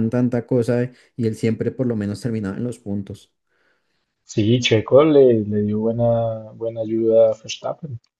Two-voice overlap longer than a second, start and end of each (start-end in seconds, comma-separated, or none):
none